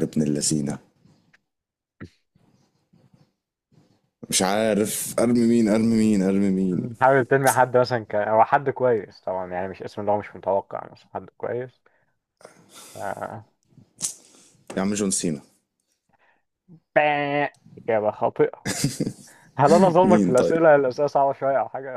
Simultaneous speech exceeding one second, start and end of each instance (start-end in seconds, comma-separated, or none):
none